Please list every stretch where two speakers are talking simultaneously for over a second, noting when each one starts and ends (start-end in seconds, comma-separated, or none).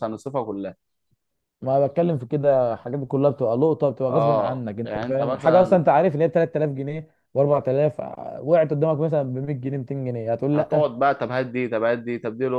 4.1-5.8